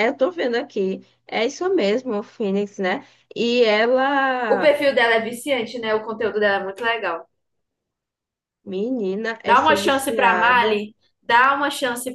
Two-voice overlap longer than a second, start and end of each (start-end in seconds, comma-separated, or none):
9.4-10.8